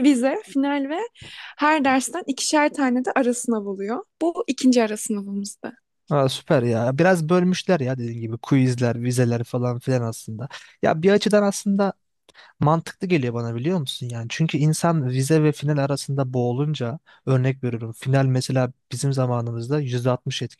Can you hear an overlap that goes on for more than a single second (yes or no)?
no